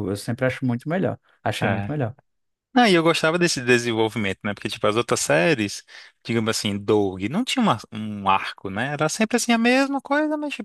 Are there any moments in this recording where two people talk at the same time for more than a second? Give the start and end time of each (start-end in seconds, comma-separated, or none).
none